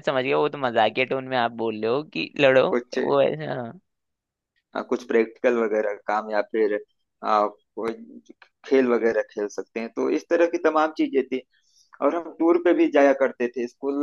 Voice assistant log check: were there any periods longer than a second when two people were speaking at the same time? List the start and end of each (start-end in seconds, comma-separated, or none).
none